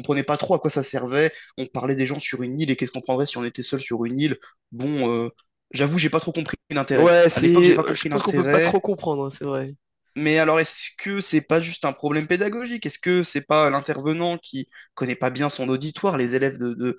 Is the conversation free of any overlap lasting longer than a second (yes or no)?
no